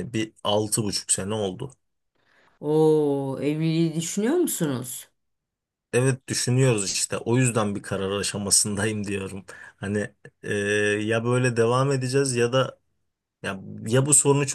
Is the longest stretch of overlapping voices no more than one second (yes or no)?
yes